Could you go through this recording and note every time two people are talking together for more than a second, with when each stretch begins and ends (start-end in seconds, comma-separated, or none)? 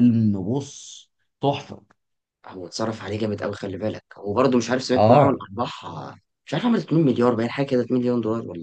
none